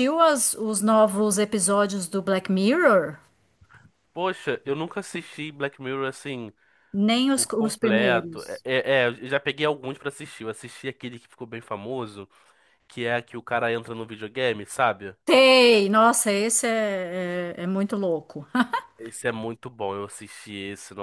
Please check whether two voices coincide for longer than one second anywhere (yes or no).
yes